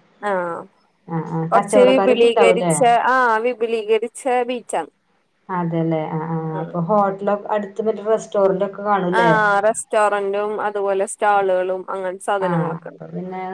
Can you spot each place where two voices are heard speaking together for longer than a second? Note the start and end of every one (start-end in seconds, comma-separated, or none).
1.5-2.7